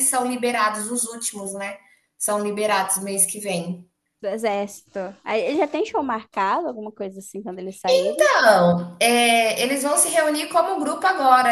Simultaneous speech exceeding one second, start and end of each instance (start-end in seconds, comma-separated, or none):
none